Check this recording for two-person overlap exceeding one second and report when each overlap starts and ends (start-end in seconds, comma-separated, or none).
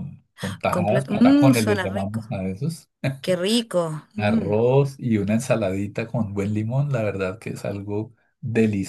0.7-2.2